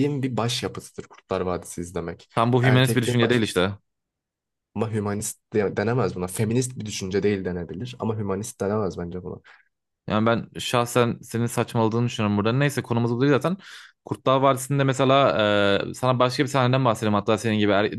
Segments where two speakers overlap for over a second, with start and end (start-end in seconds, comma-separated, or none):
2.4-3.6